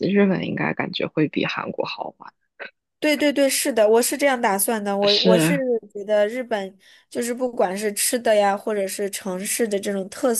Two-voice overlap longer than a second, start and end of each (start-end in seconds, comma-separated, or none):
none